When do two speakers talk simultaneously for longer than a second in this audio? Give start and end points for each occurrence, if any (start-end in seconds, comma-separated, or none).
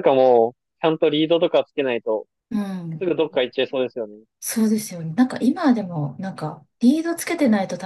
none